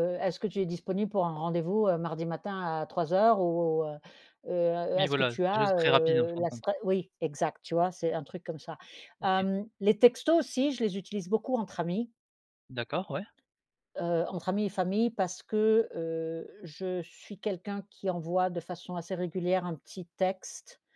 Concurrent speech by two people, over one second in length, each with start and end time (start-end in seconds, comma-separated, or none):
5.0-6.7